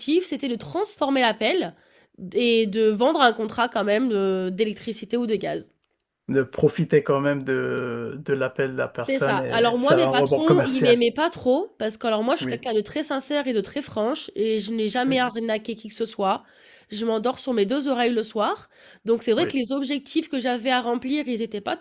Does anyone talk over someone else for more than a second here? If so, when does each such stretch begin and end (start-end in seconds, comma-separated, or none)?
9.0-11.0